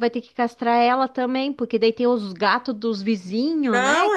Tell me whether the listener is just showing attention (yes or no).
no